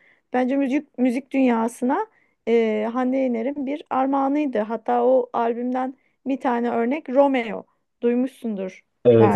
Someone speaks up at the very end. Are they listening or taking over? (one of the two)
taking over